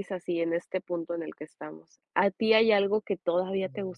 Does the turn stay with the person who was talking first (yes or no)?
yes